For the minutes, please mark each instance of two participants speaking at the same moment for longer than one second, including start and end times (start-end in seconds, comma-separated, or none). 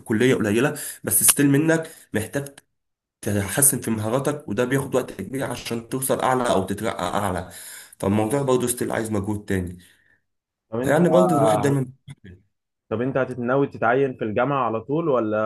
none